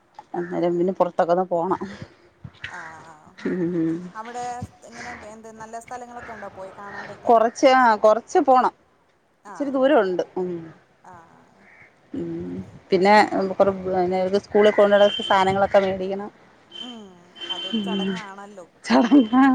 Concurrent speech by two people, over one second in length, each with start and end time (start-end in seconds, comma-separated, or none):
none